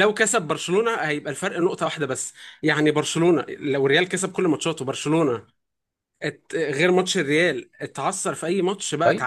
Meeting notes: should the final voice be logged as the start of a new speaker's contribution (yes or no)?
yes